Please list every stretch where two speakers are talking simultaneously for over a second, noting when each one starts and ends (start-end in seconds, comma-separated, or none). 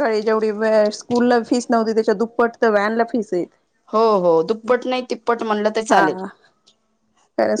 none